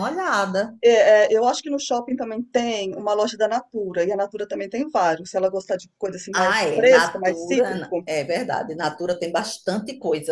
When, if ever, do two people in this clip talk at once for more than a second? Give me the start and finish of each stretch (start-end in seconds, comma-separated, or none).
6.3-8.1